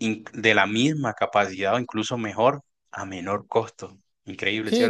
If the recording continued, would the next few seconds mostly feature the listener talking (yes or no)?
yes